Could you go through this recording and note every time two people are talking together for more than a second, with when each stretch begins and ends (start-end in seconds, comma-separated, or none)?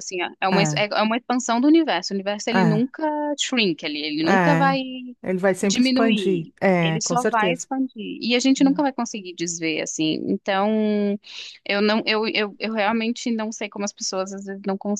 5.6-7.7